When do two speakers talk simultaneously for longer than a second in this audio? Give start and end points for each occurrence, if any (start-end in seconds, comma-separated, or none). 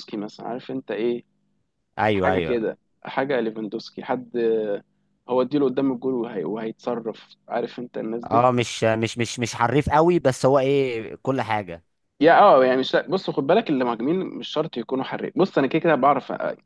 none